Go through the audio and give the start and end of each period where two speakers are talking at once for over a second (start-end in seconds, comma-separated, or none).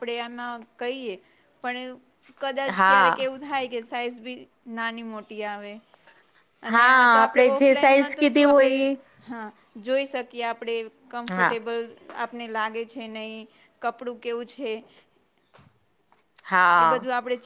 6.7-8.8